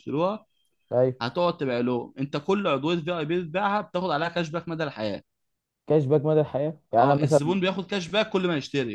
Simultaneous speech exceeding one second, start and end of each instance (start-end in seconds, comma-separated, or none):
none